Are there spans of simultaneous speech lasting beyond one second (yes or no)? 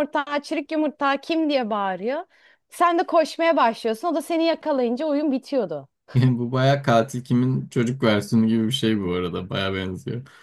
no